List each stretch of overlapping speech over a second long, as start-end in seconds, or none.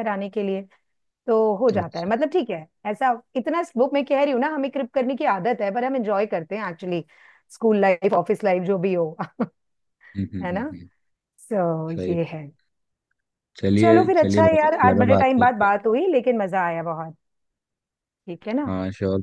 13.8-15.7